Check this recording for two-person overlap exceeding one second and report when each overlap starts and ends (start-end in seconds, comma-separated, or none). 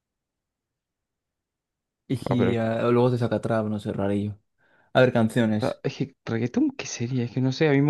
none